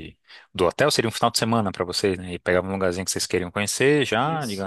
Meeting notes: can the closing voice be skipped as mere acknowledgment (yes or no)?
yes